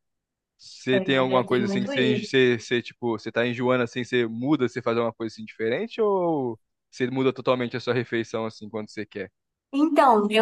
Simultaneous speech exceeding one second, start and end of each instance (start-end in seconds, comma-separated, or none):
0.9-2.3